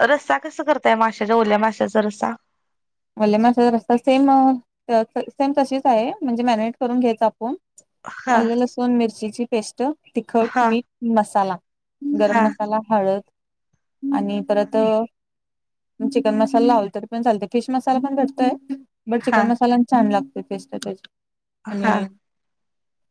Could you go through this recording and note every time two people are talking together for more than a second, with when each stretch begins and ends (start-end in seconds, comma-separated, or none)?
none